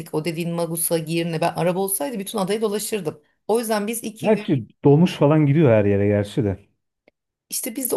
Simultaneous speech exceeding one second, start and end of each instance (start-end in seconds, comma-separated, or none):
none